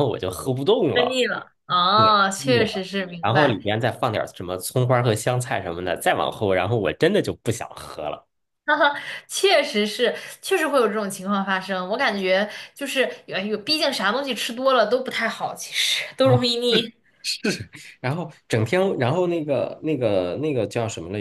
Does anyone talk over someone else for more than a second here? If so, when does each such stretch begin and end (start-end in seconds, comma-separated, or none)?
1.9-3.6